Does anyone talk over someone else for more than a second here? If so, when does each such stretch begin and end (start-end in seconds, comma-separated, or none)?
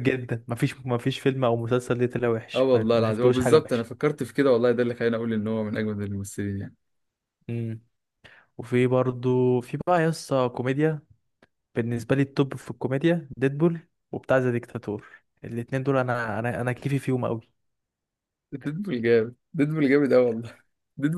2.5-3.8